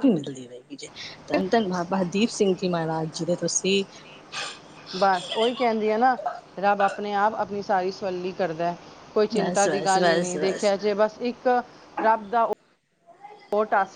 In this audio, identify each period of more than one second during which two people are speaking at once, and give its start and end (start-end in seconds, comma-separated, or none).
9.4-10.7